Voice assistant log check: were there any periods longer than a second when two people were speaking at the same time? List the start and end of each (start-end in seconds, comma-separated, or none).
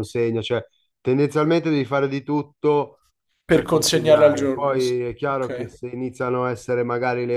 3.5-5.8